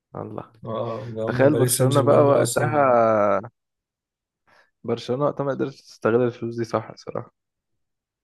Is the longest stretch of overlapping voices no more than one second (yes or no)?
no